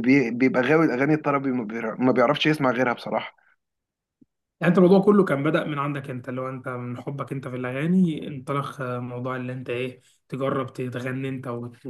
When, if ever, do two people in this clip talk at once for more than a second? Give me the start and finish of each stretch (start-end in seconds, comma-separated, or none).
none